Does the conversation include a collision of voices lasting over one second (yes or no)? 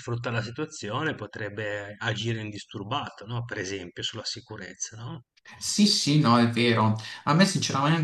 no